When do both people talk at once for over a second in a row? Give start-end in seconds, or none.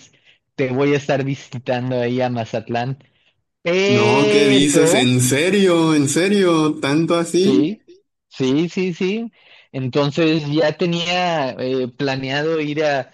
3.9-5.1